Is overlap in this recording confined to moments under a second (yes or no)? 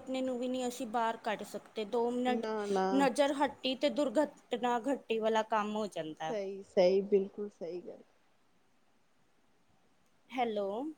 yes